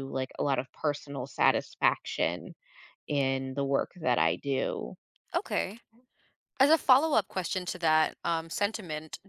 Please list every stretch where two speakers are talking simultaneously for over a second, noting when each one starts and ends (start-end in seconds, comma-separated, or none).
none